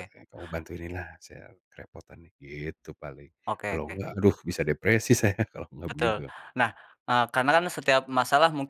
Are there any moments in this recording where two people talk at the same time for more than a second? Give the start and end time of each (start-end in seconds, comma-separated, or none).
none